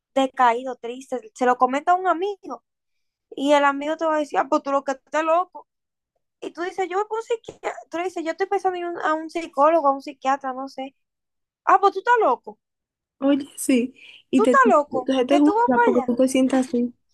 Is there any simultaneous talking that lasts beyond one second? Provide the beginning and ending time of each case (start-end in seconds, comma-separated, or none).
14.3-16.2